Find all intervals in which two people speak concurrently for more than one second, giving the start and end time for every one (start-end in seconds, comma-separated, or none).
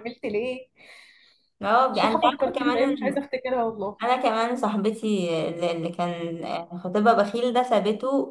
1.9-3.2